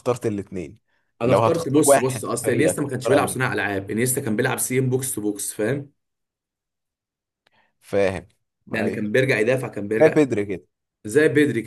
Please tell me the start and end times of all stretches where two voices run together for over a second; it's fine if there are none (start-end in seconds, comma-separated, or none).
1.2-3.4